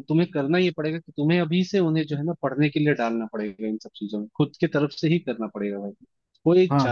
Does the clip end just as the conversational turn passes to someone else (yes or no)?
yes